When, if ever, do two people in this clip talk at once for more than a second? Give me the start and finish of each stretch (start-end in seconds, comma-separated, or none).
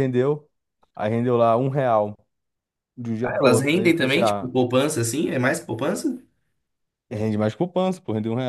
3.2-4.5